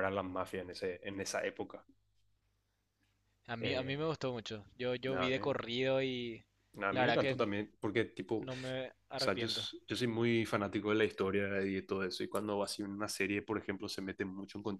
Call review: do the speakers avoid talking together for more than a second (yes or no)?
yes